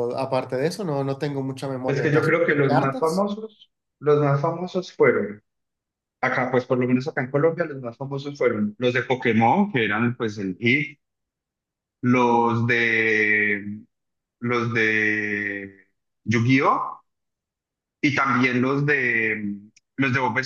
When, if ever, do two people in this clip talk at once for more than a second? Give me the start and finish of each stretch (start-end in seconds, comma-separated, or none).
1.9-3.3